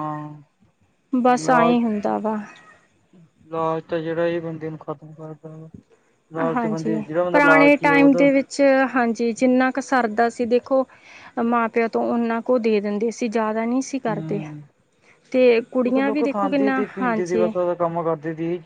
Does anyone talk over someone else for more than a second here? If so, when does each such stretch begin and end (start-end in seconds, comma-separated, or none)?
15.9-17.4